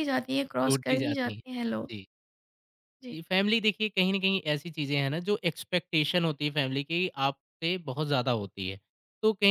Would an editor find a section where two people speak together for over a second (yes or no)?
yes